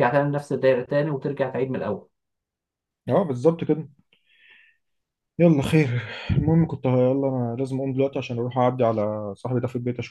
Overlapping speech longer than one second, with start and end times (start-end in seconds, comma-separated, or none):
none